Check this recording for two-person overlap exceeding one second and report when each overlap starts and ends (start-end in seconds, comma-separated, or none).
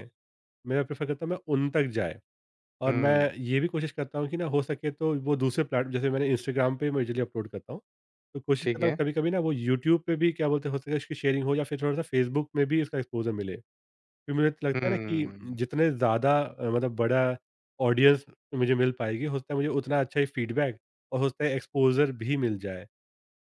none